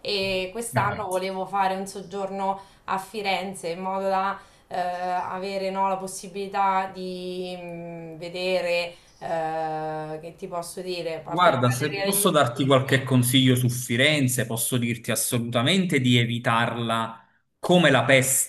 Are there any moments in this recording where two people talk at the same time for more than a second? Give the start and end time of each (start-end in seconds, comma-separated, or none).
11.3-13.1